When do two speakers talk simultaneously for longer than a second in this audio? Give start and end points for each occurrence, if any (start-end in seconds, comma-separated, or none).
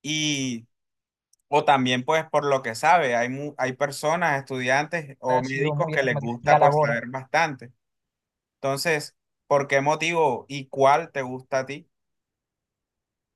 5.3-7.0